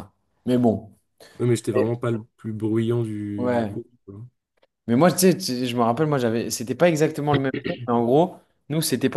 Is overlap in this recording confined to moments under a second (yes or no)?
yes